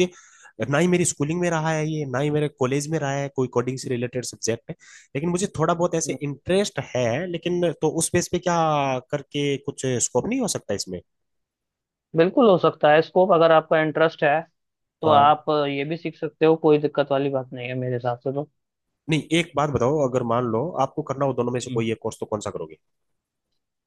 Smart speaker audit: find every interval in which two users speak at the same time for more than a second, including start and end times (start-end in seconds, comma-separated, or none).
none